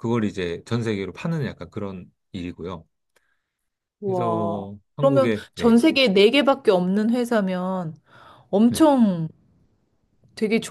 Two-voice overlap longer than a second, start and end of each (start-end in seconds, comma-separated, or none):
4.0-5.8